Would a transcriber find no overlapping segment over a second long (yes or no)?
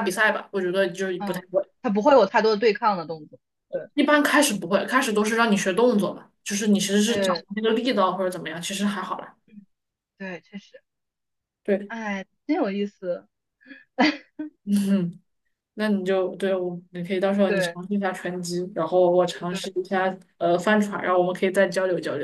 yes